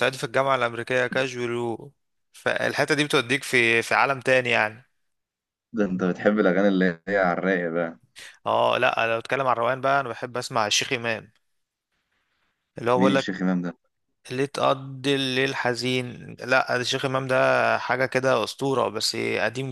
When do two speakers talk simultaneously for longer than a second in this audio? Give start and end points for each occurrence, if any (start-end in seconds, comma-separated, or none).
none